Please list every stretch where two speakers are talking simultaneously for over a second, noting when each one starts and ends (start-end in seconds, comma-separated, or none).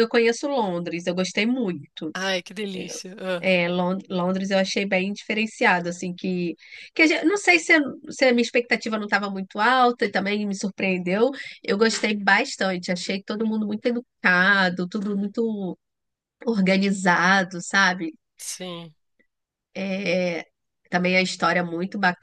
none